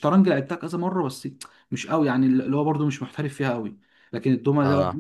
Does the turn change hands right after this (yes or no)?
no